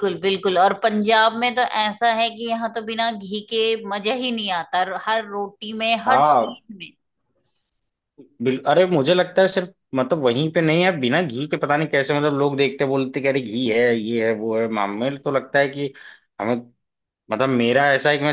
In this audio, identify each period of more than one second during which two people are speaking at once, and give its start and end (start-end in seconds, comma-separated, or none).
none